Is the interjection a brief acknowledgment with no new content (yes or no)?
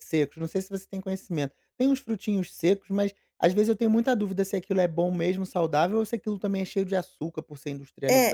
no